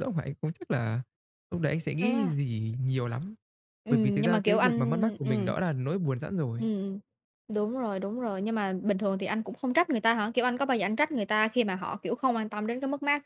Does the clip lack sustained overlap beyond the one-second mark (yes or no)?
no